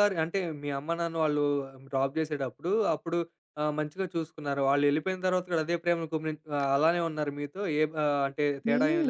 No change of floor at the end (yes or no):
no